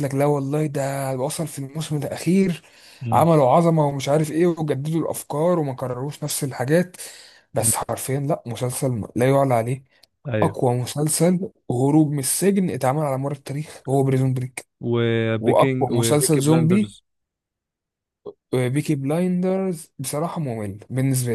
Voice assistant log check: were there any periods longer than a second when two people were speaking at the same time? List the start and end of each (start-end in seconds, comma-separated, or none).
15.4-16.9